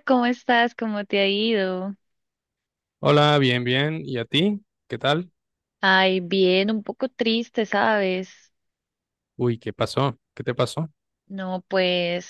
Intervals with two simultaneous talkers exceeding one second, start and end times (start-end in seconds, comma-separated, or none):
none